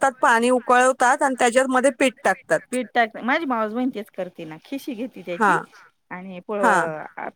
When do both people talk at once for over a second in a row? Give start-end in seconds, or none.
1.3-2.6